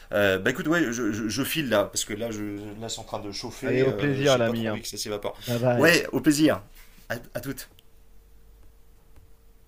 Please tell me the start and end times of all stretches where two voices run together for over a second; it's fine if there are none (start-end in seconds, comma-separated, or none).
3.6-4.8